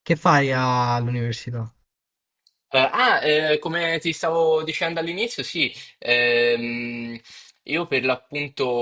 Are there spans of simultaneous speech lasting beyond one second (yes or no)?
no